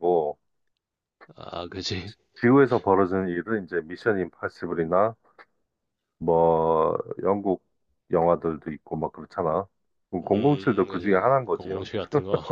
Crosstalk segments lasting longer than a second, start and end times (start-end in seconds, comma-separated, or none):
10.3-11.9